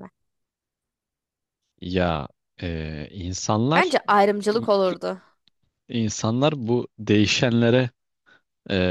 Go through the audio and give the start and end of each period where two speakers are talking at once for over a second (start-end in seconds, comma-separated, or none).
none